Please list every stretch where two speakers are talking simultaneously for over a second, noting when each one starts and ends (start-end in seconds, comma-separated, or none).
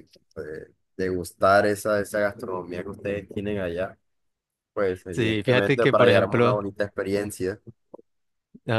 5.1-6.6